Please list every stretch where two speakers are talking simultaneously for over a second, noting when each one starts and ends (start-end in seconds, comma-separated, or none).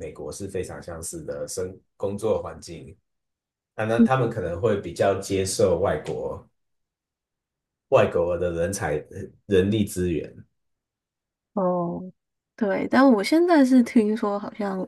none